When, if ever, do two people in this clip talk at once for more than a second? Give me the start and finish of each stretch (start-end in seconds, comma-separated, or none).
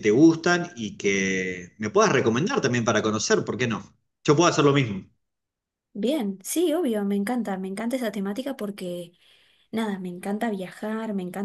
none